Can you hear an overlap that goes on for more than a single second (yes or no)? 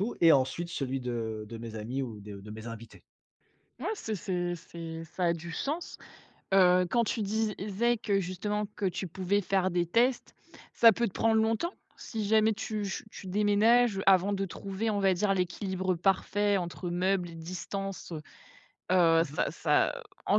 no